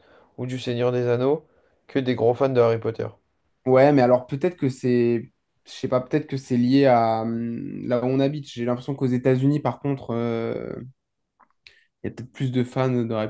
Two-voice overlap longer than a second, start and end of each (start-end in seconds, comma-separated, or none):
none